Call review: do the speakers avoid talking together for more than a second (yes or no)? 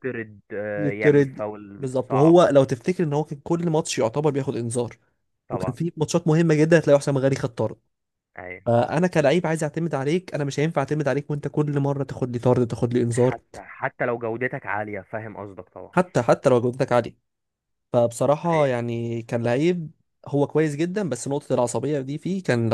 no